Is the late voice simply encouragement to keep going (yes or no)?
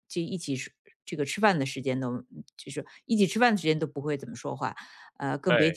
yes